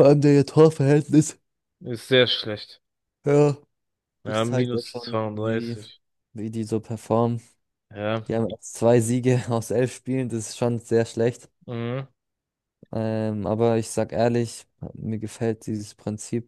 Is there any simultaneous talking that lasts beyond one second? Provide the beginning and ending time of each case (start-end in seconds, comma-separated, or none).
4.2-5.8